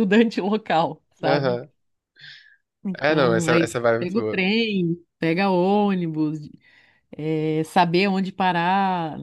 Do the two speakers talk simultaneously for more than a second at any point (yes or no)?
yes